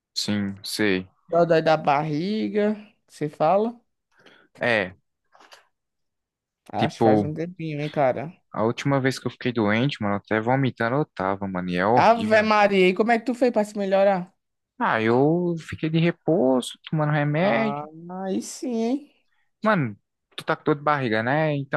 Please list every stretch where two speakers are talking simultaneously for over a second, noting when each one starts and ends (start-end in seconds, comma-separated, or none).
none